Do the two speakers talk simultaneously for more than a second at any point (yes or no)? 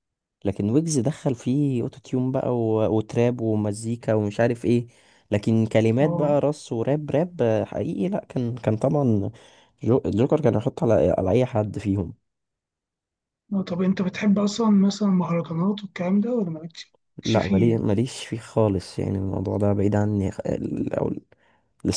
no